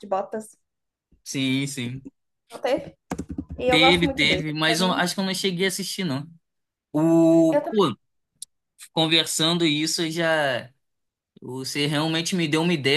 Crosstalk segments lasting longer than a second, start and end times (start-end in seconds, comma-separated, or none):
3.7-5.0